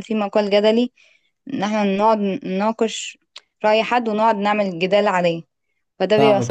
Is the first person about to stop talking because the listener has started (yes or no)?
yes